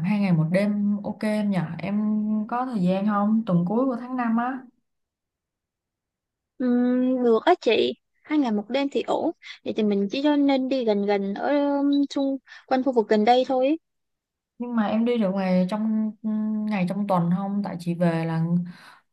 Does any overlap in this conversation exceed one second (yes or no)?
no